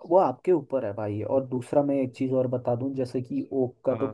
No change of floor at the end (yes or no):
yes